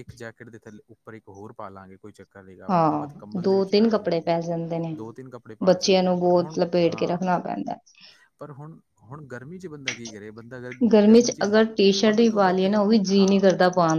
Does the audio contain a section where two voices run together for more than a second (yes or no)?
yes